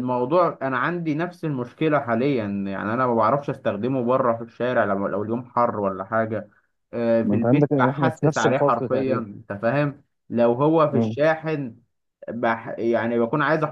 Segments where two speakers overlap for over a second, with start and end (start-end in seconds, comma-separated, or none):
7.2-9.2